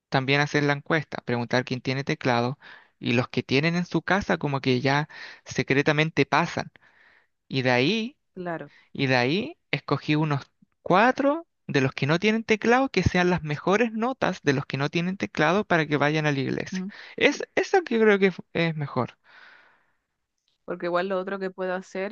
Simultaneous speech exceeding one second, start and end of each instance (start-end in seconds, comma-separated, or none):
none